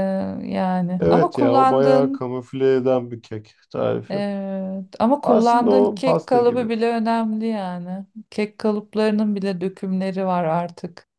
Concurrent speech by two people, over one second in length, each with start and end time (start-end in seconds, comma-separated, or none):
1.0-2.3, 5.2-6.7